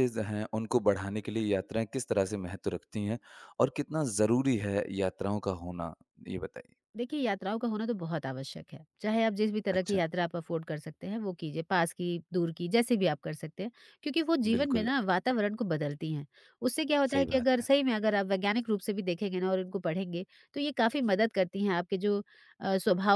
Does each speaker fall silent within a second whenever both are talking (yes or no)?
yes